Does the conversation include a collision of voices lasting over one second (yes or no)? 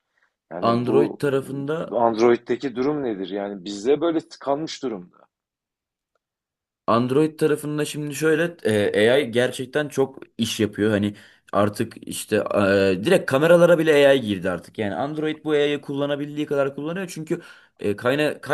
no